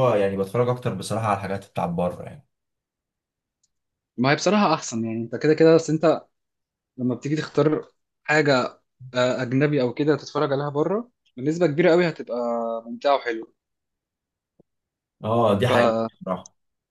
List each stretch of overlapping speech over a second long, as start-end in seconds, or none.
none